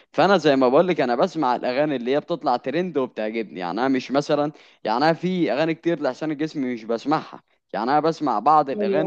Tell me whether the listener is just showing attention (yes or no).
yes